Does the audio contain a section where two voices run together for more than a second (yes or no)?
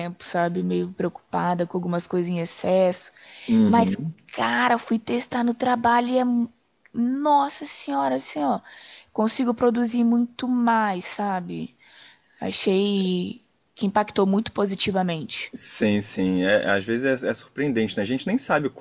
no